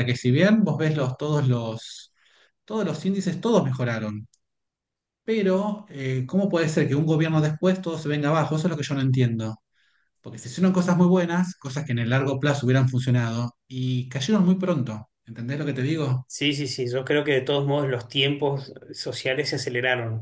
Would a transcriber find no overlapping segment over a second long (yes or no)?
yes